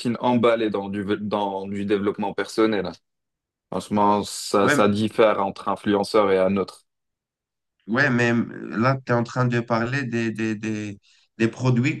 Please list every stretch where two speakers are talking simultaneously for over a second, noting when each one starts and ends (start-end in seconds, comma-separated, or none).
none